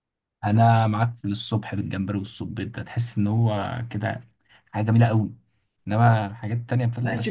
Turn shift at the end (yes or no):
yes